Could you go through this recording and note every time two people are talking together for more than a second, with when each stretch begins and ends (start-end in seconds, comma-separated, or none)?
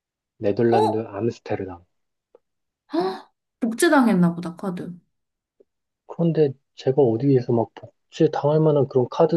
none